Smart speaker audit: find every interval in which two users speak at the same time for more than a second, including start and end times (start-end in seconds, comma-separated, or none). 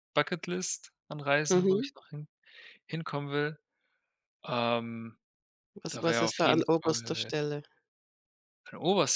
5.9-7.3